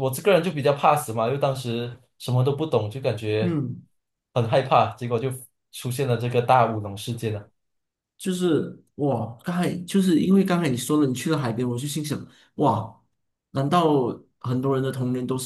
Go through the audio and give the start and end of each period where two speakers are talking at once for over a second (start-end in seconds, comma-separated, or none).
none